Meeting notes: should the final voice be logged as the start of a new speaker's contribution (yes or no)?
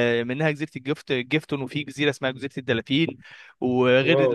no